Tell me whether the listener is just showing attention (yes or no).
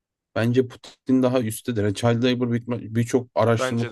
yes